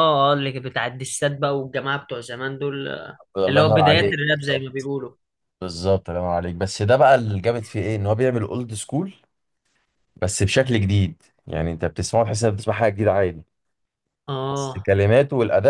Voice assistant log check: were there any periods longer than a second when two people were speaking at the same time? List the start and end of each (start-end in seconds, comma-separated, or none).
3.4-4.9